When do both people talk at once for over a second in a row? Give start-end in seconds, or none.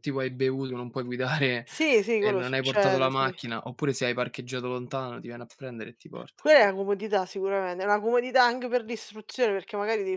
2.2-3.4